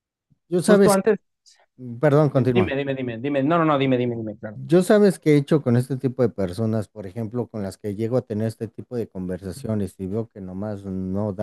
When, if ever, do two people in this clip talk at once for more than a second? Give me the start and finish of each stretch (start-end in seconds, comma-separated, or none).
none